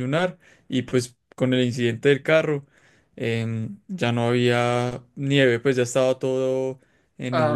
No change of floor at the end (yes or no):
no